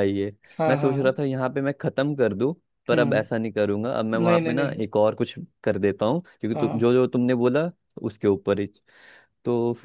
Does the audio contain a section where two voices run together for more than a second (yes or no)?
no